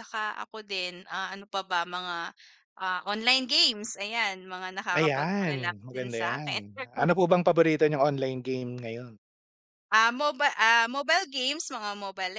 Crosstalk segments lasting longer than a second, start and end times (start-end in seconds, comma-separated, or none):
5.0-6.9